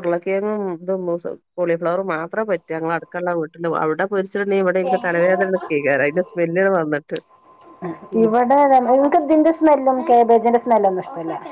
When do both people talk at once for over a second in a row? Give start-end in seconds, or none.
none